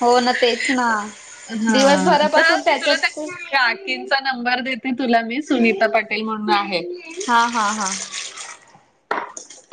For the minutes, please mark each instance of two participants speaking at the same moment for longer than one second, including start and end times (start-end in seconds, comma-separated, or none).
none